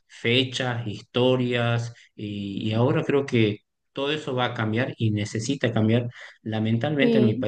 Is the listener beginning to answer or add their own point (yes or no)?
no